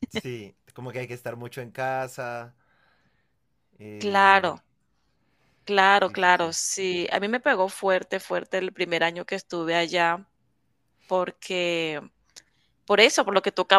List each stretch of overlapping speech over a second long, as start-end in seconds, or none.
none